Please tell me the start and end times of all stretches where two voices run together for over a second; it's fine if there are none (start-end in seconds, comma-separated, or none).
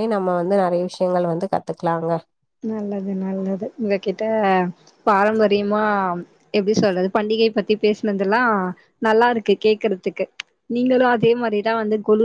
none